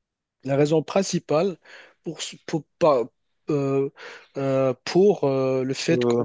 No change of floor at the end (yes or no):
yes